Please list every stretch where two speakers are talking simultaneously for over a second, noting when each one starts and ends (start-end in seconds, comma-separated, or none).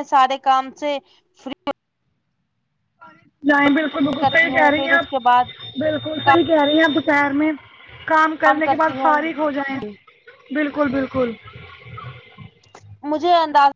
4.2-5.5